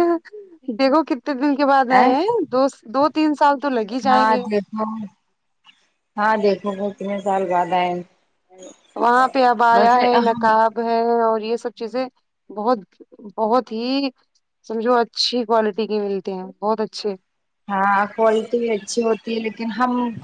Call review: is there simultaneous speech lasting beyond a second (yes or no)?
no